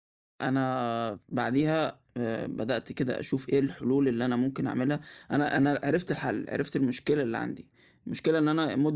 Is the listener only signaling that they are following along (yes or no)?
yes